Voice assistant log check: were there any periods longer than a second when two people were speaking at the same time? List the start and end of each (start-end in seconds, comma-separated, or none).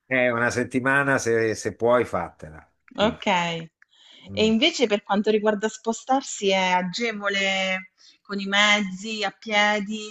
none